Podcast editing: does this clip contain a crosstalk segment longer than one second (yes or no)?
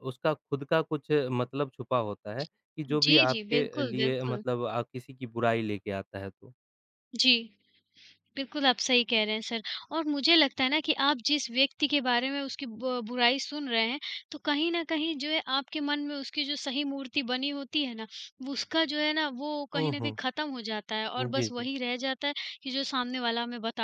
yes